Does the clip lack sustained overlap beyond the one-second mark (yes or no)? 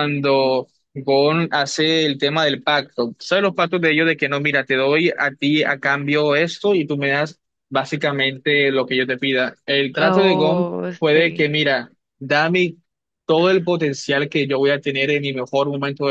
no